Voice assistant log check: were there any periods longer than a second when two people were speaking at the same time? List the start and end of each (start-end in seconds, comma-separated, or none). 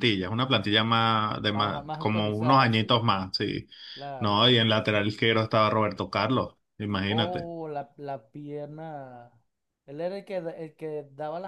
1.4-3.0